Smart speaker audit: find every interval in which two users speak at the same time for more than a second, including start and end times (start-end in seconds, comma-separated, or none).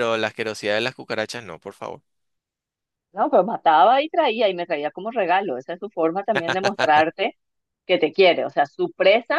none